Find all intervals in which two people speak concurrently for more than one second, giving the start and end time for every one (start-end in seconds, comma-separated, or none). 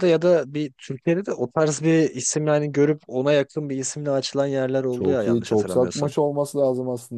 4.9-6.1